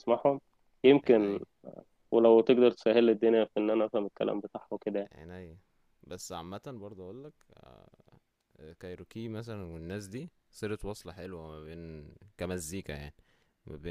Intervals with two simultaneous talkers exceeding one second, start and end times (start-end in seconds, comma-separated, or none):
none